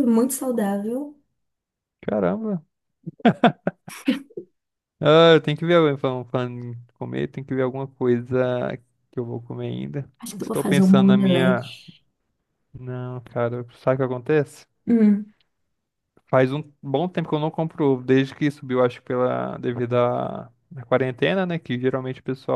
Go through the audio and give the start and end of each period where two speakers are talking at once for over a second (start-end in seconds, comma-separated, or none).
10.2-11.7